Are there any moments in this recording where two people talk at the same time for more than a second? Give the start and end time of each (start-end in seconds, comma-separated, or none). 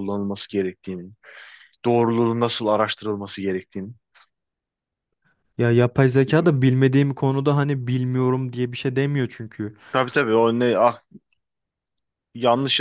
none